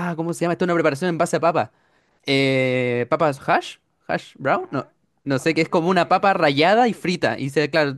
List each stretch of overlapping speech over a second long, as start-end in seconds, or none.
5.3-7.2